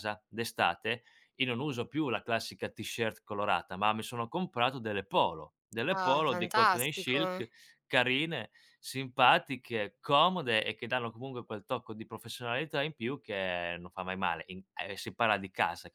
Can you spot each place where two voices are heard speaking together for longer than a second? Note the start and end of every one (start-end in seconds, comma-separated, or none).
5.9-7.4